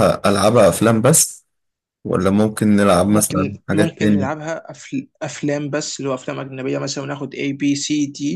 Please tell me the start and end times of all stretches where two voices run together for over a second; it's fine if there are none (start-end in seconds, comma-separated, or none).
3.1-4.4